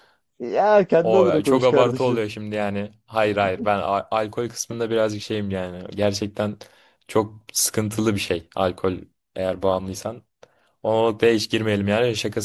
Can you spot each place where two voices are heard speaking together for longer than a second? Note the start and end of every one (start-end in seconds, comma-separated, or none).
1.0-2.2